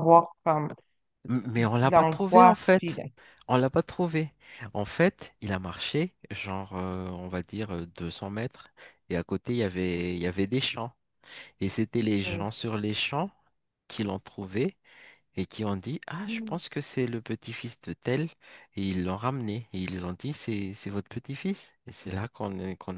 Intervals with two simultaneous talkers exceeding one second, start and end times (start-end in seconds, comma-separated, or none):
1.6-3.0